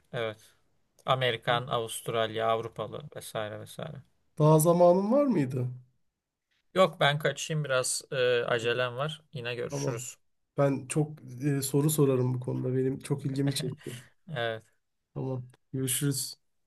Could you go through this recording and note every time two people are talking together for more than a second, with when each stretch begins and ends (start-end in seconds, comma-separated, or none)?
none